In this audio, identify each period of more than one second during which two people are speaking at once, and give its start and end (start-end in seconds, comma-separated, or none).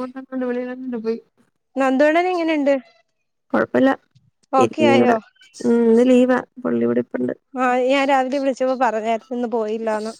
none